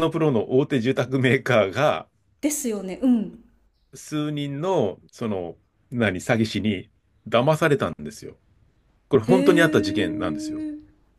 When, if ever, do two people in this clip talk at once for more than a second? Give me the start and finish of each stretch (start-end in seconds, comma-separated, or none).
9.2-10.6